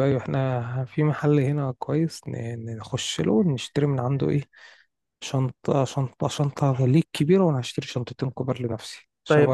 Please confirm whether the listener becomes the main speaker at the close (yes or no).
yes